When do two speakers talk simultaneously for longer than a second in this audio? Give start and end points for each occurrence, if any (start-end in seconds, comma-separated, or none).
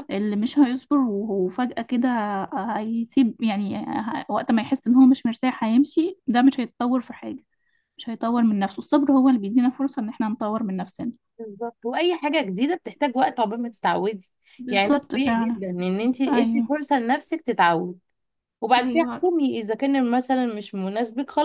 14.7-16.7